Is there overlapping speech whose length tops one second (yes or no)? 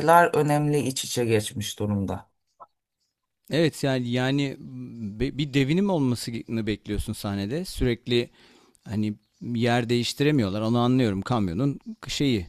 no